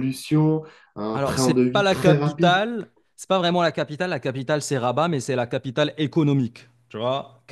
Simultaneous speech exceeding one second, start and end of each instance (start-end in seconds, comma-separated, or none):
1.1-2.6